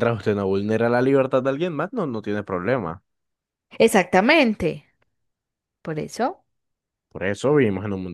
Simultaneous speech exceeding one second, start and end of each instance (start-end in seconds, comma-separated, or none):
none